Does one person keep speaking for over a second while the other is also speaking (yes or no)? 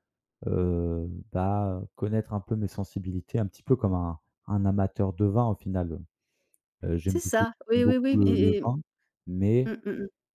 yes